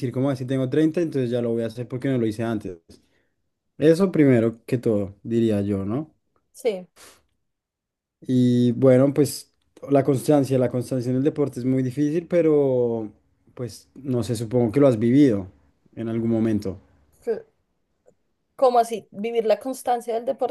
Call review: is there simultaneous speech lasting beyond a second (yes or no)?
no